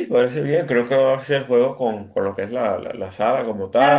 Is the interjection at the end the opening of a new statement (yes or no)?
yes